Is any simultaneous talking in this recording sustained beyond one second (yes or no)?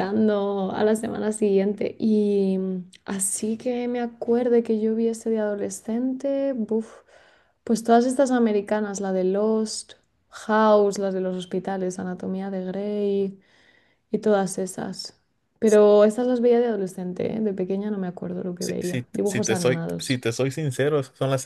yes